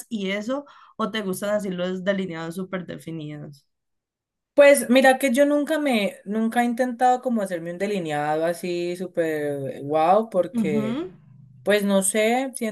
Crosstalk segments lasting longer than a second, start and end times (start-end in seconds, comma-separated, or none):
none